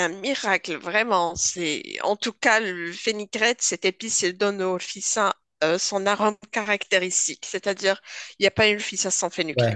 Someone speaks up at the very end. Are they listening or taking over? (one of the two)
taking over